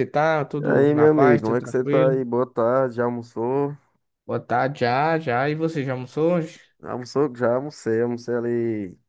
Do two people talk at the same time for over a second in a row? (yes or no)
yes